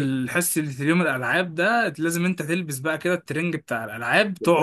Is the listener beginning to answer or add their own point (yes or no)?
yes